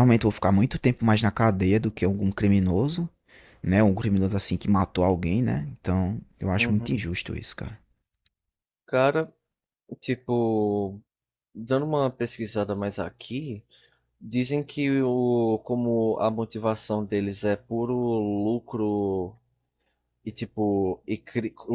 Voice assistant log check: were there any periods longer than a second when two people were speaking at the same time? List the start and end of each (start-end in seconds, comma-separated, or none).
none